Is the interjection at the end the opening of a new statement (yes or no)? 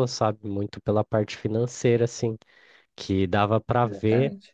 no